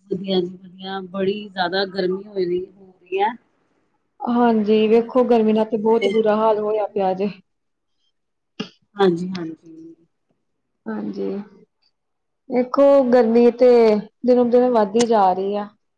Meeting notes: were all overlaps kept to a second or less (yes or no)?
no